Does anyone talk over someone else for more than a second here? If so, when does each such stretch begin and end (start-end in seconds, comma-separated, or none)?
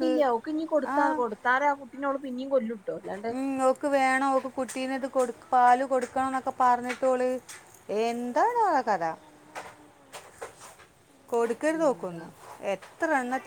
none